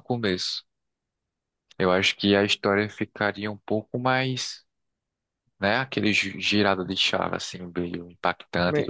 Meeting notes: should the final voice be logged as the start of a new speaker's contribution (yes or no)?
yes